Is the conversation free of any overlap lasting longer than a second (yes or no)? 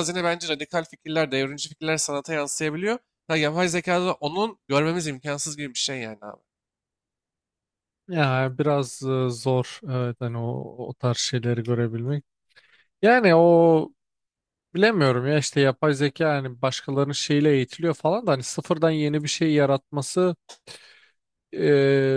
yes